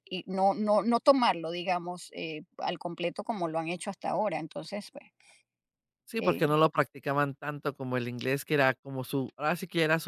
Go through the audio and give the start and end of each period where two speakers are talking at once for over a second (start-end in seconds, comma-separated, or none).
none